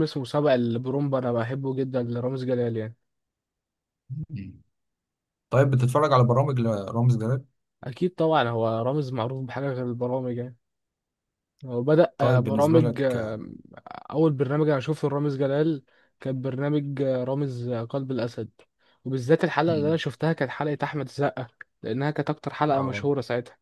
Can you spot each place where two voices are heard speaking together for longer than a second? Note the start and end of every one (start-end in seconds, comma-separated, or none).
12.2-13.4